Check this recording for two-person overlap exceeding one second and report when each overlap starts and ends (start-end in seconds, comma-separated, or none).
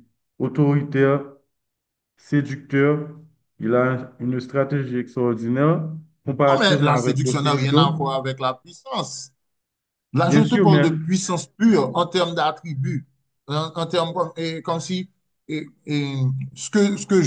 6.5-7.9